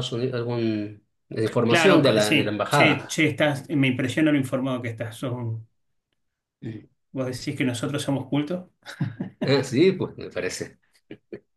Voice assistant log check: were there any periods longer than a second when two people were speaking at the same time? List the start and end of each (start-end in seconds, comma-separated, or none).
1.7-3.2